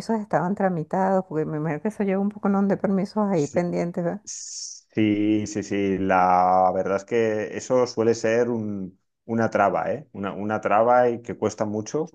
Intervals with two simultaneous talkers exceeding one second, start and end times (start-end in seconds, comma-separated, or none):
none